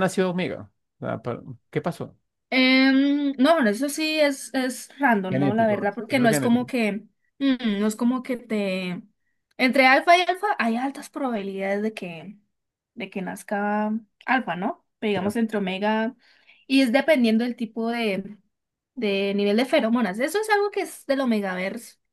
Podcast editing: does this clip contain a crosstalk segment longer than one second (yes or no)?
yes